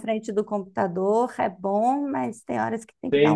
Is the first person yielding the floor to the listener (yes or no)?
yes